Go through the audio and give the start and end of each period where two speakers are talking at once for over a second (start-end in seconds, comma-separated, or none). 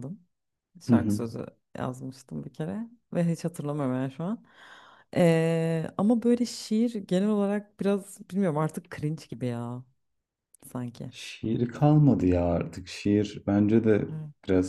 none